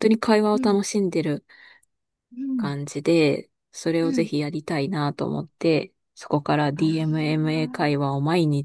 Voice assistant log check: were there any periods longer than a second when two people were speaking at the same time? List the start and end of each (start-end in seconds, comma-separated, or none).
6.8-8.0